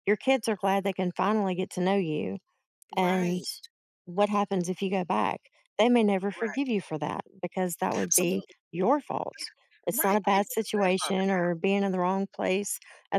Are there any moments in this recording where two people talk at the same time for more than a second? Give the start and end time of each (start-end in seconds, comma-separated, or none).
9.9-11.2